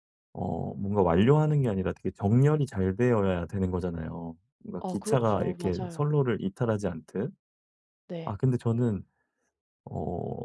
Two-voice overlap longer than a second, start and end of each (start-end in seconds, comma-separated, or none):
4.8-6.2